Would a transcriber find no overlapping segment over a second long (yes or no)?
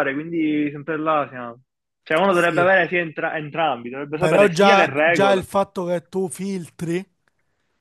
no